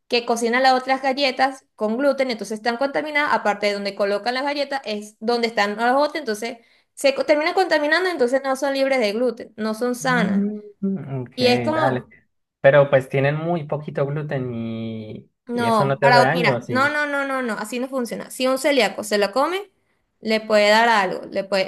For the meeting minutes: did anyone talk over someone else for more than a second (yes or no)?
yes